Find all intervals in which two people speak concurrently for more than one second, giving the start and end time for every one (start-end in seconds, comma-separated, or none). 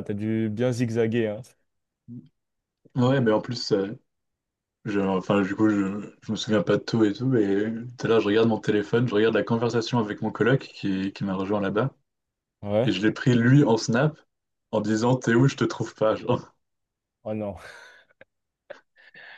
none